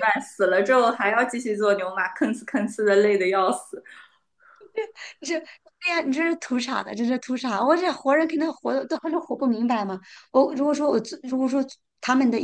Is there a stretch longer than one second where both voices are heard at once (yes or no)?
no